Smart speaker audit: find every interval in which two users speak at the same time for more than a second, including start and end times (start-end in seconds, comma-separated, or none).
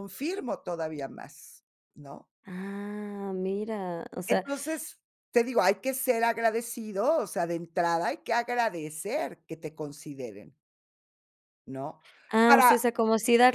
none